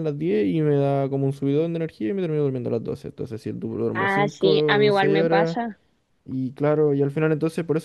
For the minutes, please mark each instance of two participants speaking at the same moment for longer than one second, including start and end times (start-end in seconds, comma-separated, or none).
4.0-5.6